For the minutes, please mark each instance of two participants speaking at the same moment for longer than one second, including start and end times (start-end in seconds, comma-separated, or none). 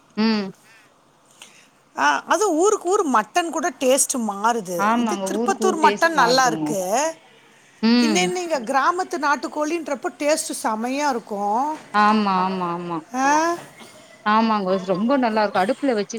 4.9-6.7